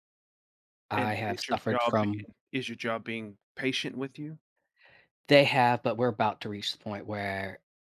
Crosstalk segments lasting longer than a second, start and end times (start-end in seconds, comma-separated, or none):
0.9-2.3